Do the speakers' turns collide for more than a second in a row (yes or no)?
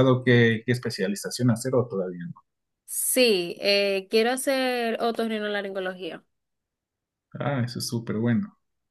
no